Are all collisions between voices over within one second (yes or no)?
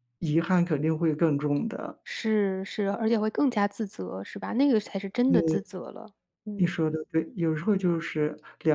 yes